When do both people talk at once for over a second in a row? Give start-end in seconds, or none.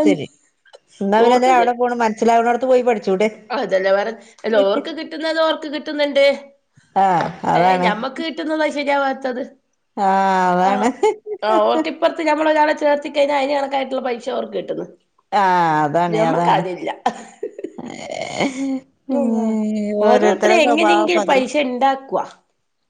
20.1-21.4